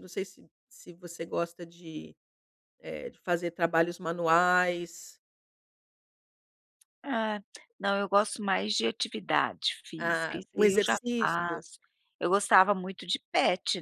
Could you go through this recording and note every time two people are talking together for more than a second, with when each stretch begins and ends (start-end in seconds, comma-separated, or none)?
10.0-11.7